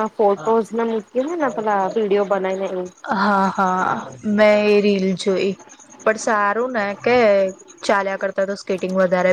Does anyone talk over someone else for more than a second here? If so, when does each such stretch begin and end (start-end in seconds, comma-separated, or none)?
none